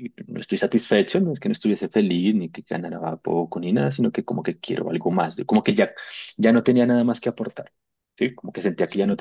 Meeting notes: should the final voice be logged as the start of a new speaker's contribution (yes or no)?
no